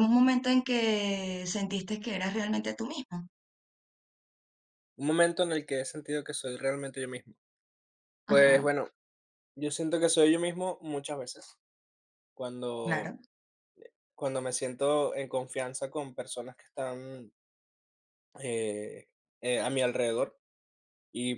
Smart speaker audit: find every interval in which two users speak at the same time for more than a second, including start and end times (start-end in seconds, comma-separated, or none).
none